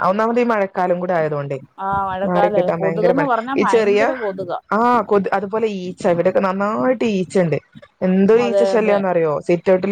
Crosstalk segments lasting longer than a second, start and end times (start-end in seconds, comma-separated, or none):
1.9-4.0